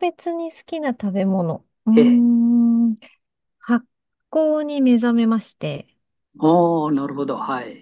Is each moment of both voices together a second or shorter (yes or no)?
yes